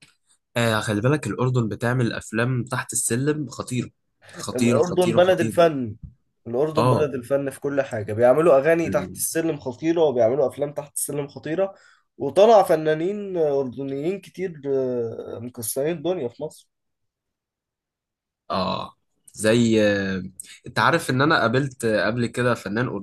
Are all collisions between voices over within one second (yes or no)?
no